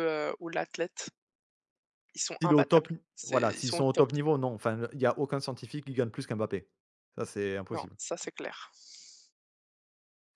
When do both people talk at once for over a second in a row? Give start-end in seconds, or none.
2.4-4.0